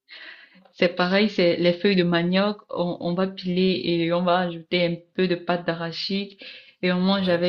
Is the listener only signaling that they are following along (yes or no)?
yes